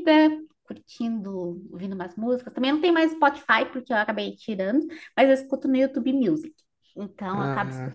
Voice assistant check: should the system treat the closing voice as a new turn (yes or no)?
no